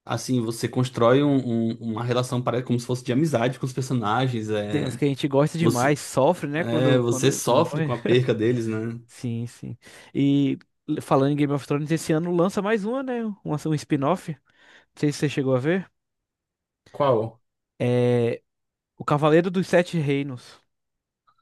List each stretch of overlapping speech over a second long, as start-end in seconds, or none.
6.6-7.9